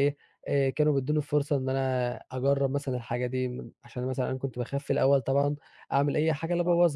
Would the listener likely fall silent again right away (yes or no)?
yes